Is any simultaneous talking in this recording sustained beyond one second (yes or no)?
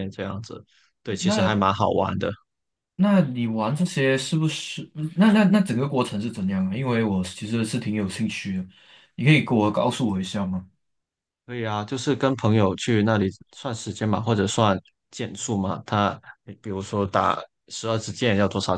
no